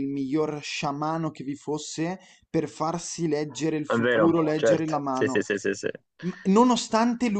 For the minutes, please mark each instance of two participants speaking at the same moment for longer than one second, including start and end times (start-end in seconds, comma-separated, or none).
3.9-5.4